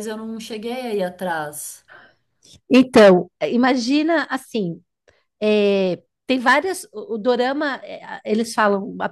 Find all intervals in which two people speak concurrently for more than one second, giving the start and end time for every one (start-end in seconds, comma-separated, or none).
none